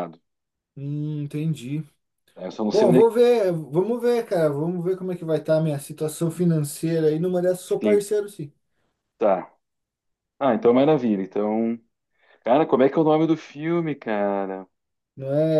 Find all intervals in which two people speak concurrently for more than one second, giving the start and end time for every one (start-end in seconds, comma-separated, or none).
none